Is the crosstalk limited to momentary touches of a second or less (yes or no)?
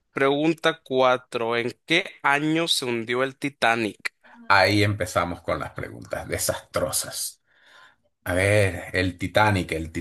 yes